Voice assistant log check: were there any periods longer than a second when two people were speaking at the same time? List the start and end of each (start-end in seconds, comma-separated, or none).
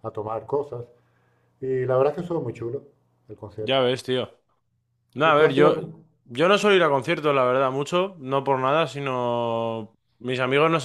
none